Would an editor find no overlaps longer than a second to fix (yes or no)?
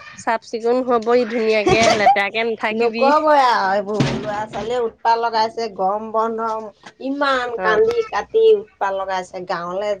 yes